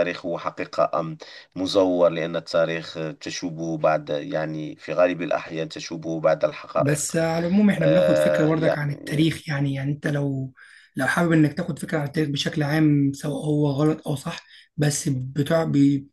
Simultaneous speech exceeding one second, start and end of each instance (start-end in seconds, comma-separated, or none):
7.8-9.2